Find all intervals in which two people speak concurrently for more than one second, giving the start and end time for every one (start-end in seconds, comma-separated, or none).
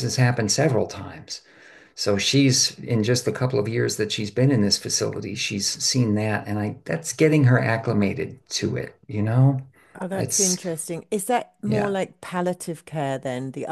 none